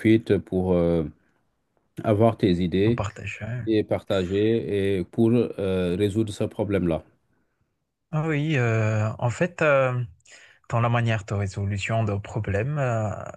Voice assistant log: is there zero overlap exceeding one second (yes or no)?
yes